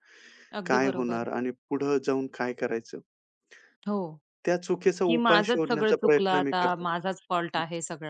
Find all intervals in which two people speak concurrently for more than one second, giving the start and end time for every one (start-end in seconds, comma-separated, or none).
5.1-6.9